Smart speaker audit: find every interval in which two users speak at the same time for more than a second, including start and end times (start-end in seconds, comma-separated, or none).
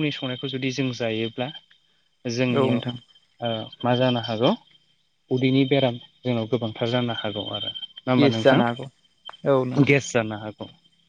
none